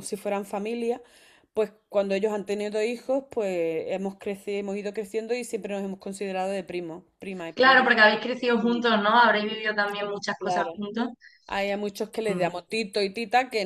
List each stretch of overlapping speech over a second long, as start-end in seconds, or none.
none